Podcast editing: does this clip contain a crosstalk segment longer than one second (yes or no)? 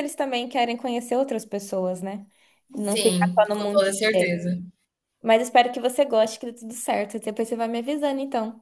yes